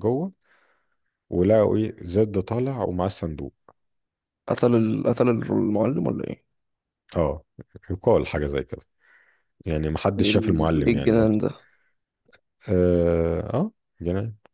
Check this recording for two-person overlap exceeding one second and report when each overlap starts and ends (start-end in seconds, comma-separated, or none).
10.2-11.4